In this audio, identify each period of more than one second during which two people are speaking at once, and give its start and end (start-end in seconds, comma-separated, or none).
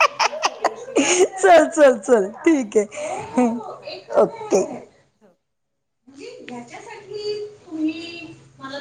none